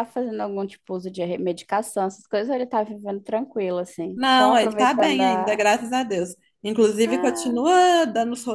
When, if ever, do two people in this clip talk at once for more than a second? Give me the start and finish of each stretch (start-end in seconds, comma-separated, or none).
4.2-5.6